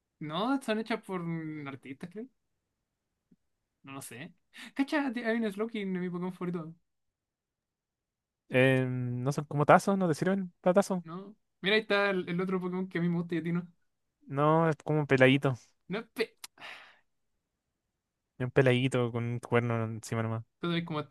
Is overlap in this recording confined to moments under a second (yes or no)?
yes